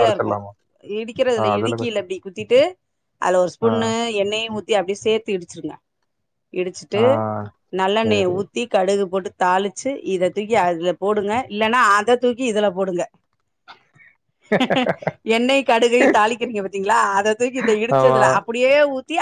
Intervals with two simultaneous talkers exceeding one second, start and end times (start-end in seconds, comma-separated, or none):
none